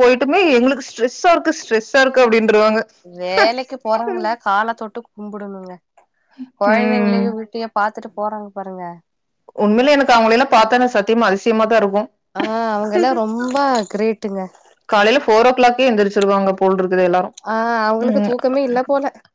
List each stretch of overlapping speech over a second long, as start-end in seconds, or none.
none